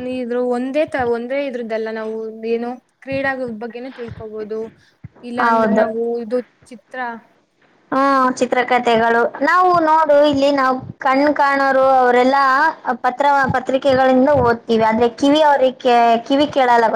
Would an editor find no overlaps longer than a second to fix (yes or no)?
yes